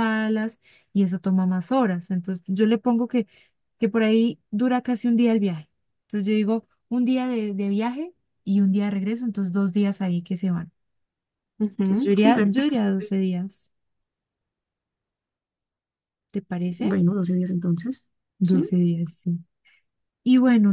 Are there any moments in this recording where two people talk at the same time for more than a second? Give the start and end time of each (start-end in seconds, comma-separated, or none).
11.8-13.1